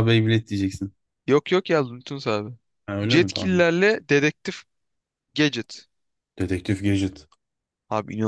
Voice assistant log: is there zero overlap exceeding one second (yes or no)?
yes